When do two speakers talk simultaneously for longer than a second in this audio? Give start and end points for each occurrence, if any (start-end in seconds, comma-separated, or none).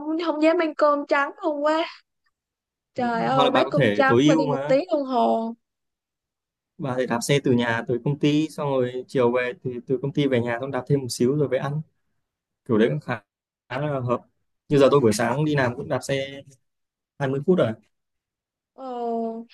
3.0-4.8